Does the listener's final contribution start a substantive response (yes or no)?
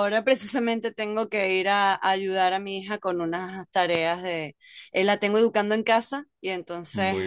no